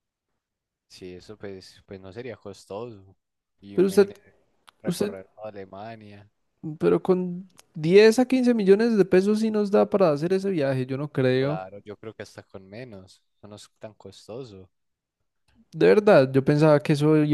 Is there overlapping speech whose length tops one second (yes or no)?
no